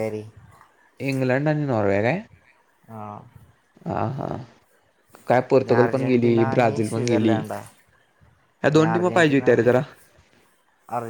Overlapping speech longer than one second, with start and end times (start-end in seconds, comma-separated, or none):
5.6-7.8